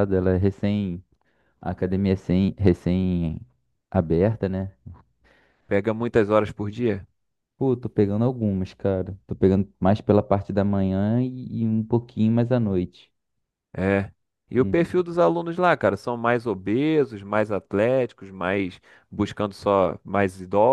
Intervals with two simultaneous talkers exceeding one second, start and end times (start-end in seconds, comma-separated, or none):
none